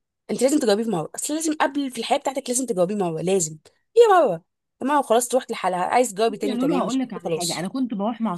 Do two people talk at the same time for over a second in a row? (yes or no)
yes